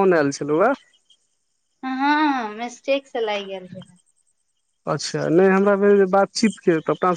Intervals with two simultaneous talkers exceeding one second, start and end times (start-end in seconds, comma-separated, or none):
none